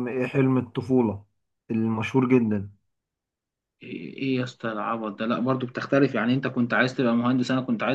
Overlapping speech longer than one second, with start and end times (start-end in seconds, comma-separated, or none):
none